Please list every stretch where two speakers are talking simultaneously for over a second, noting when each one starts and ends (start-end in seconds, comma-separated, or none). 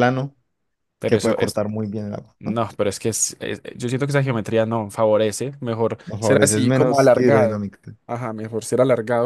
6.1-7.6